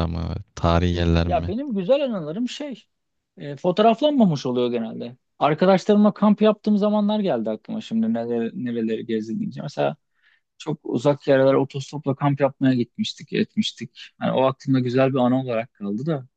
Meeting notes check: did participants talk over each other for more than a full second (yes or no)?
no